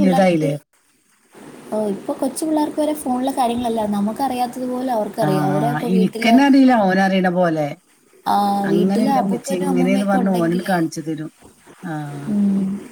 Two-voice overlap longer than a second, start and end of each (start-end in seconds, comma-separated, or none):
8.7-10.8